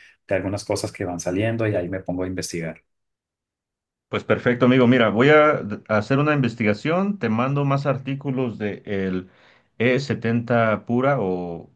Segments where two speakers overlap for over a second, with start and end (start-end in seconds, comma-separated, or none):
none